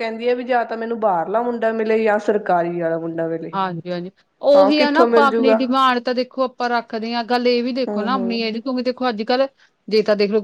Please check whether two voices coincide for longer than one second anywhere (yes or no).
no